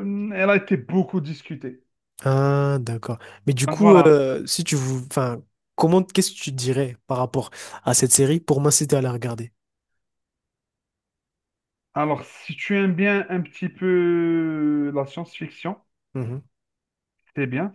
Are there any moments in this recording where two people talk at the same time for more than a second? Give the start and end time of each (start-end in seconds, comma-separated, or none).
none